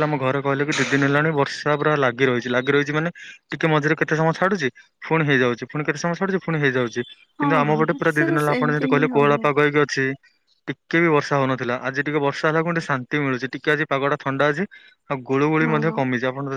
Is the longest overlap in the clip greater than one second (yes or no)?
yes